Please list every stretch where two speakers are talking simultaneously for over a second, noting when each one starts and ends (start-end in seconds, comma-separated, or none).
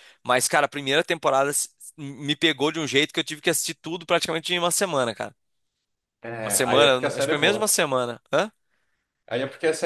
6.4-7.7